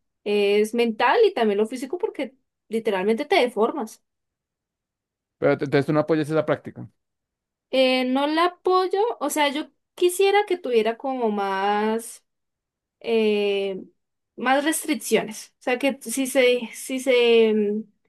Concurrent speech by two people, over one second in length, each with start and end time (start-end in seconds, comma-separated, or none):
none